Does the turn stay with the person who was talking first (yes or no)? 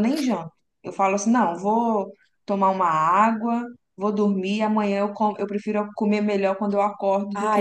no